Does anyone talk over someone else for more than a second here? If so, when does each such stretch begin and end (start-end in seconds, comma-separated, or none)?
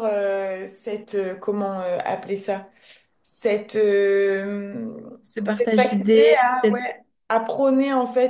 5.6-6.9